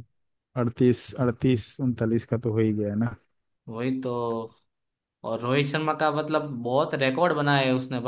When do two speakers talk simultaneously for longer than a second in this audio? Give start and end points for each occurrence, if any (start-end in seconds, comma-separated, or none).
none